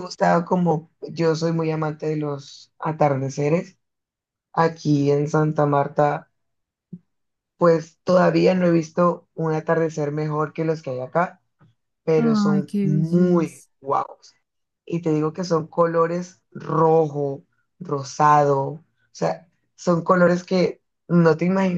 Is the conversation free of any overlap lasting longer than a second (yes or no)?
no